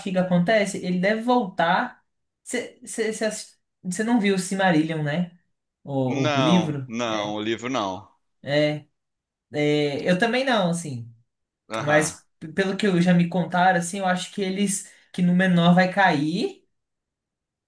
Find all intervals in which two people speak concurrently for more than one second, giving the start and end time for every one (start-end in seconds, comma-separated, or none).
6.0-7.4